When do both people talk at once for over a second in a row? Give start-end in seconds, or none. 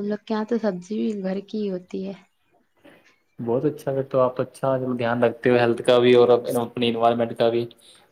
none